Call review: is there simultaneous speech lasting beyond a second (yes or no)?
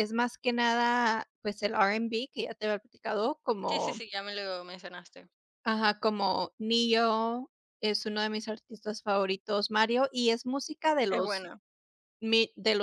no